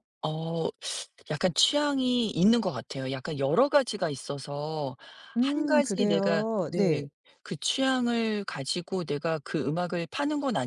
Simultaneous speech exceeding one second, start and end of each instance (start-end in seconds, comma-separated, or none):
5.4-7.1